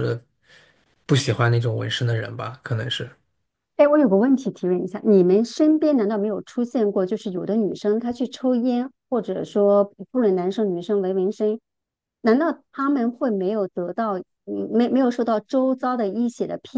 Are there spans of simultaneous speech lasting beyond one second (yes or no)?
no